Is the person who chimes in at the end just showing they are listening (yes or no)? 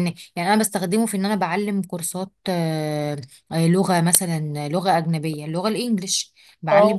yes